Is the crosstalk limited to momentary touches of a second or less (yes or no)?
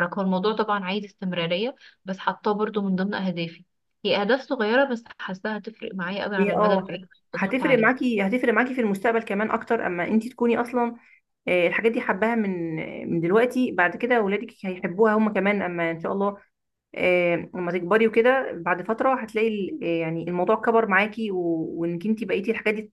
no